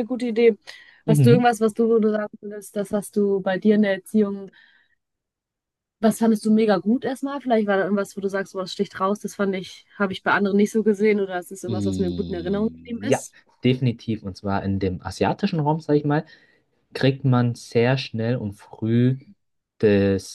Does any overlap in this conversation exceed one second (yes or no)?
yes